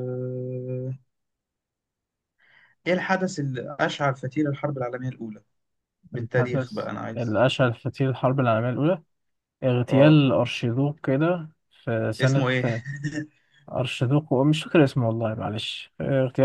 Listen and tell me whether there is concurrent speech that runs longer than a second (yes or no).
yes